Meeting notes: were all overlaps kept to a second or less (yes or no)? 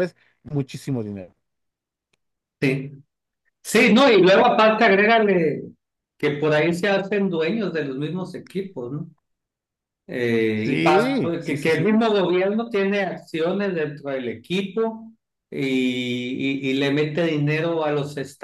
no